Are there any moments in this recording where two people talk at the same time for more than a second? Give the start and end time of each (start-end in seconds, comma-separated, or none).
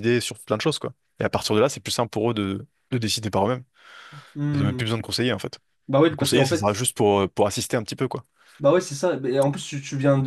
none